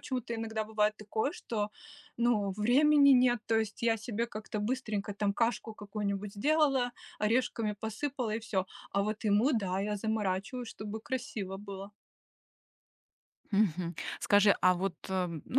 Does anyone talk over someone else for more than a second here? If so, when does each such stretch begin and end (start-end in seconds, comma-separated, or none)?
none